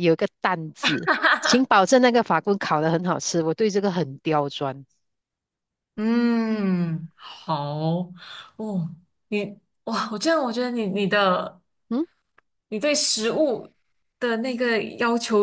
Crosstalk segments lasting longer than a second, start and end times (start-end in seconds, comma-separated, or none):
none